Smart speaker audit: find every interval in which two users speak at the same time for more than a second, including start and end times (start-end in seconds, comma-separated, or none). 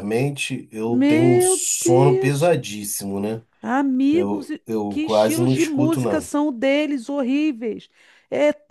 0.8-2.6, 4.1-6.3